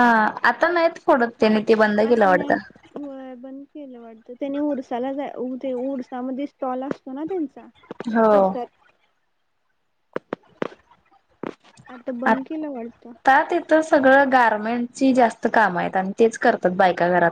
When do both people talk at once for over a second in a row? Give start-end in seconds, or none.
none